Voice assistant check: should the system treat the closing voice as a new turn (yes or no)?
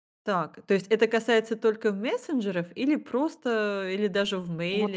yes